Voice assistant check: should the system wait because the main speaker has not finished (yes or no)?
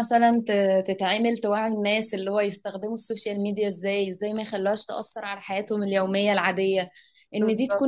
yes